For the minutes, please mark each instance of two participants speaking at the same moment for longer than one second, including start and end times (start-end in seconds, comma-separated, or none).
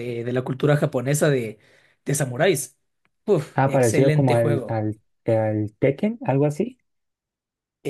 3.5-4.8